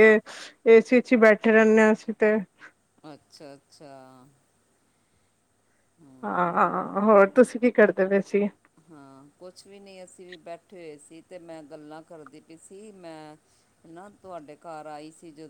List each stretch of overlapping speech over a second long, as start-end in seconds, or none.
none